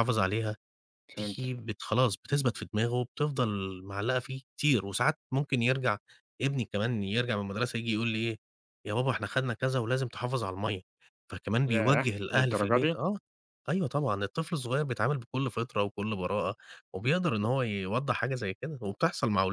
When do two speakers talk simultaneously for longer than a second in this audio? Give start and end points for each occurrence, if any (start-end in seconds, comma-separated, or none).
11.7-13.0